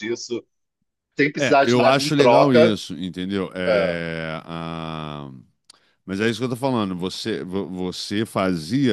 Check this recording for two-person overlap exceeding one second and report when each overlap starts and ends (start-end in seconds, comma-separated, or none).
1.3-2.8